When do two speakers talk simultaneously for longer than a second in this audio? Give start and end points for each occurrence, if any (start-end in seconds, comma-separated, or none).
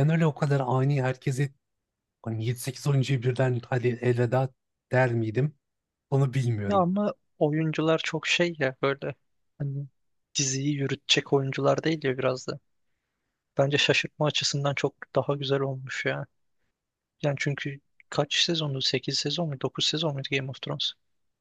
none